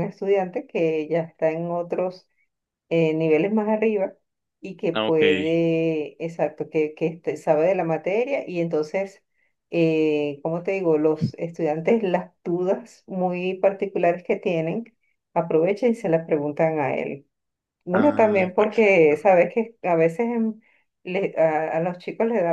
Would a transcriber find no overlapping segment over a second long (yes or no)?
no